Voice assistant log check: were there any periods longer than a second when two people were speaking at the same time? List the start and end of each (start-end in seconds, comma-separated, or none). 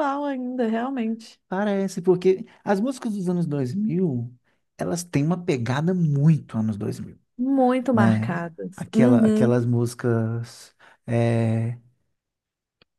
7.9-9.7